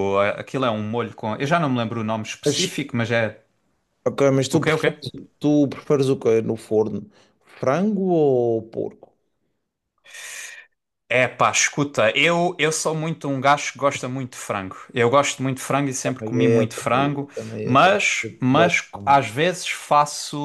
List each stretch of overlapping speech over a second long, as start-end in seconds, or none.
16.0-19.3